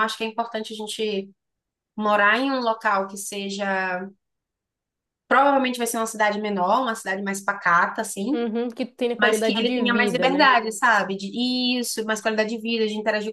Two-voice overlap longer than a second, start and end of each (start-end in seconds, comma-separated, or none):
9.2-10.5